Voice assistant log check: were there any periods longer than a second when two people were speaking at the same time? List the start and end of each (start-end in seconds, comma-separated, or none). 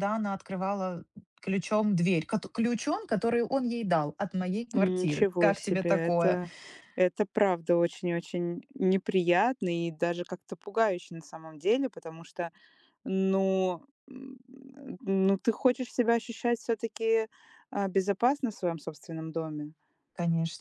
4.8-6.4